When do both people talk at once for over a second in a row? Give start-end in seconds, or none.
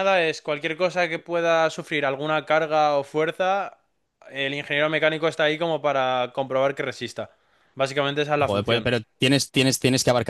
none